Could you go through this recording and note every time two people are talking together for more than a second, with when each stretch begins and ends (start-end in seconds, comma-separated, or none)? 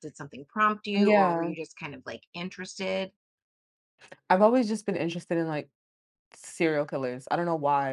none